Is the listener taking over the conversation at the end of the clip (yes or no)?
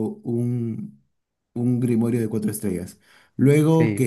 no